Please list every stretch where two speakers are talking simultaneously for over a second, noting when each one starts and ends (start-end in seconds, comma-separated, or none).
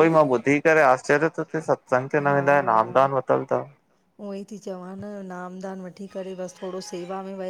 none